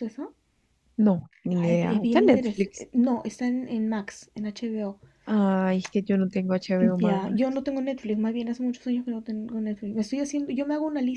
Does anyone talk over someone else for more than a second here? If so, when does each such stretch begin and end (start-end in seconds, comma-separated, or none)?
1.6-2.9